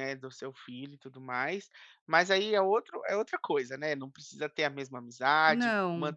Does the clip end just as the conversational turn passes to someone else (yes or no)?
no